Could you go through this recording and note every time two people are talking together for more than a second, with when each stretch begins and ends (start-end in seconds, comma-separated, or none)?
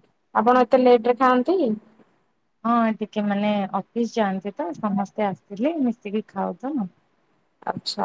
none